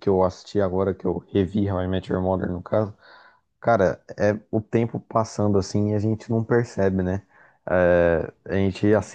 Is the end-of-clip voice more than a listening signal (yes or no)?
no